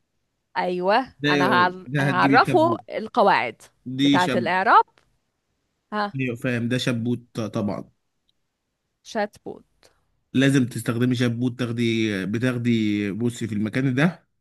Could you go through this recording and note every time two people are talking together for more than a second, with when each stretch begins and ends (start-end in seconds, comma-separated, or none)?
1.2-2.8